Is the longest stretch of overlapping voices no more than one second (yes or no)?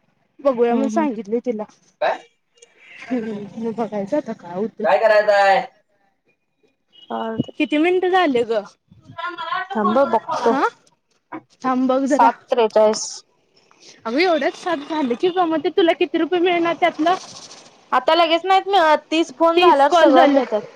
yes